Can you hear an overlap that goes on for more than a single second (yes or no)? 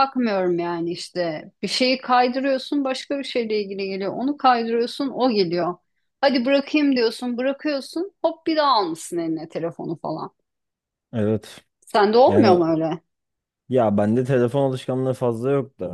no